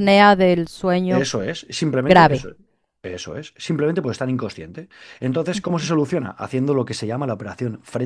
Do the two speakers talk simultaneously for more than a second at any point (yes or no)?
no